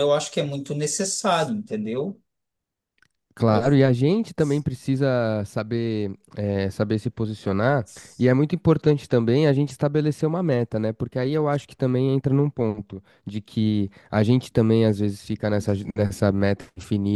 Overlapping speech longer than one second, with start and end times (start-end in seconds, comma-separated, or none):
none